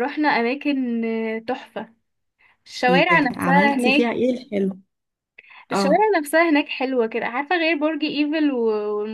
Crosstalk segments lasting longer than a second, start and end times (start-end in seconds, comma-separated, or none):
2.9-4.1